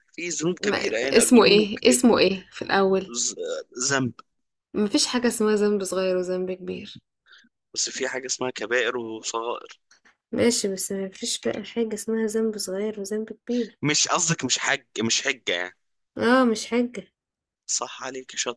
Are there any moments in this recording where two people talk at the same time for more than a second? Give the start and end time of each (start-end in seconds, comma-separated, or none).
0.6-2.1